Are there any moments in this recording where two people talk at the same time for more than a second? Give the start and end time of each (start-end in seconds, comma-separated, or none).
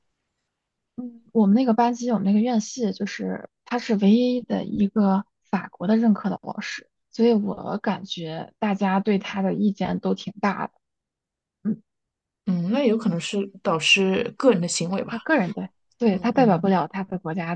none